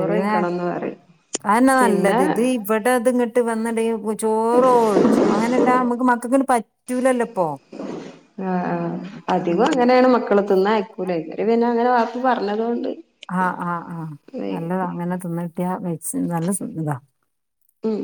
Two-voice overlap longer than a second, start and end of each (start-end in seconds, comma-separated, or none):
none